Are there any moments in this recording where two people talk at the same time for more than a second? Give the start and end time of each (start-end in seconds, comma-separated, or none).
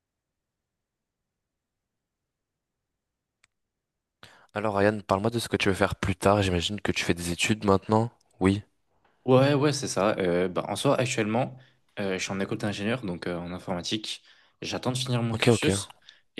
none